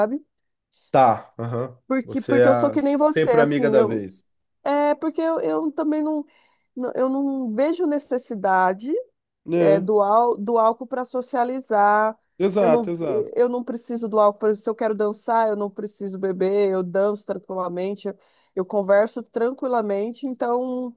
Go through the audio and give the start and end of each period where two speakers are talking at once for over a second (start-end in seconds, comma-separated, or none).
1.9-4.1